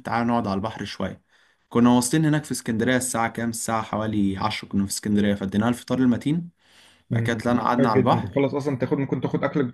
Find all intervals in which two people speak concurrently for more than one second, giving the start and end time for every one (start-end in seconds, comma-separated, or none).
7.1-8.4